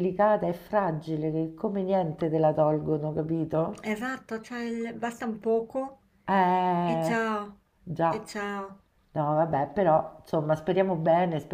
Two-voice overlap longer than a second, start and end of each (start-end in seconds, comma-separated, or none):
none